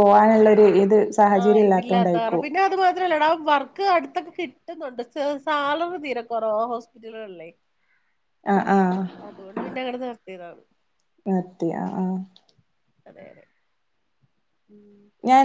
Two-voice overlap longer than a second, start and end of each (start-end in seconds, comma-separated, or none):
none